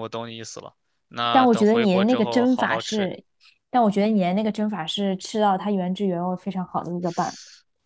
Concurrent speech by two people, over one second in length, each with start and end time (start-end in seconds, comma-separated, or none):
1.3-3.1